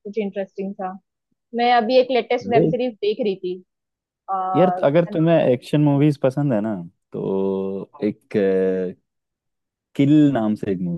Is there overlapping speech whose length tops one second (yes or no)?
no